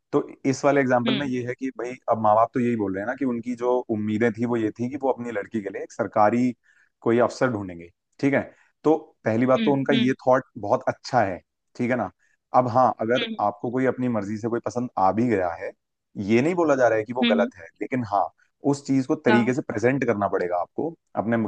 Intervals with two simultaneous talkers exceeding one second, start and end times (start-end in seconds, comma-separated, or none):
none